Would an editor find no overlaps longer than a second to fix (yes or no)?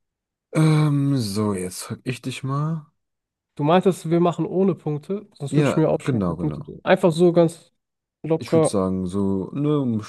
no